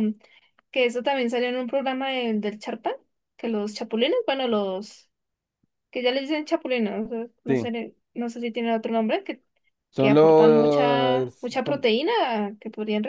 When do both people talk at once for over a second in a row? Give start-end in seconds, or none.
10.0-11.8